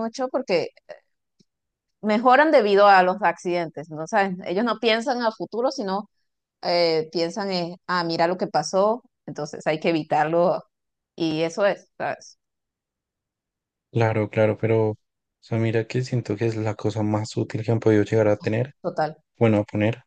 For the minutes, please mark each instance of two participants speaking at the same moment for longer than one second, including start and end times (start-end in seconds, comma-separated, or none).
none